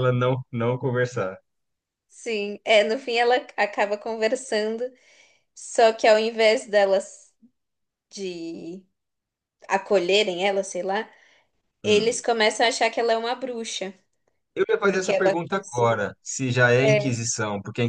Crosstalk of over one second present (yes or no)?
yes